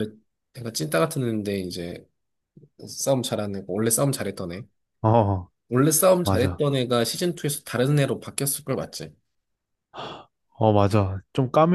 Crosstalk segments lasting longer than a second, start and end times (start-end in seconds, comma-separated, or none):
none